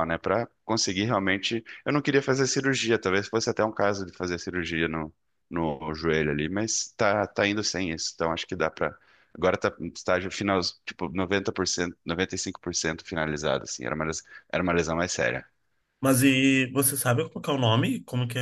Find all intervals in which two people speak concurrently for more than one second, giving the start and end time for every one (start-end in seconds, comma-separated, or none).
none